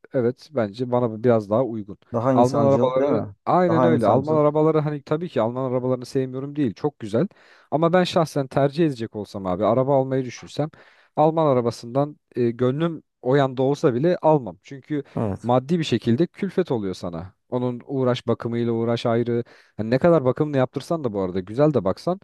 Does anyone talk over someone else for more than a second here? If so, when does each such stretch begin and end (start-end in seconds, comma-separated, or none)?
2.3-4.4